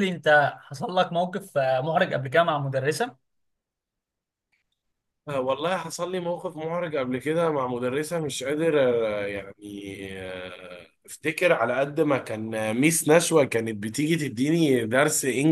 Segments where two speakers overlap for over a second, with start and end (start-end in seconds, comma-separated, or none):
none